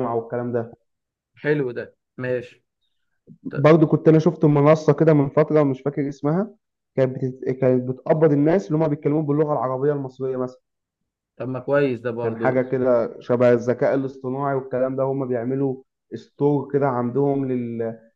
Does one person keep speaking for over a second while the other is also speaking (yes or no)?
no